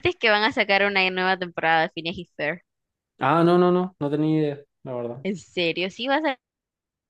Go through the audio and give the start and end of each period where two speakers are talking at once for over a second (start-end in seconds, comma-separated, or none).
none